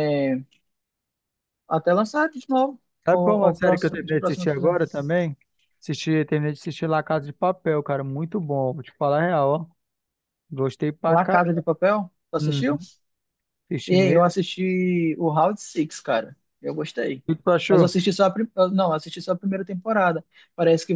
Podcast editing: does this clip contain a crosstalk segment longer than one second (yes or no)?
yes